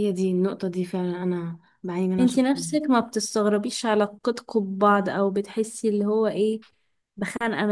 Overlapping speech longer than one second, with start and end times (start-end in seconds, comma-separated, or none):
none